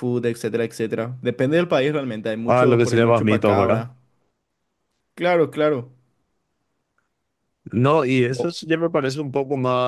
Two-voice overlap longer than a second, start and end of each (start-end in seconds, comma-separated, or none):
2.4-3.9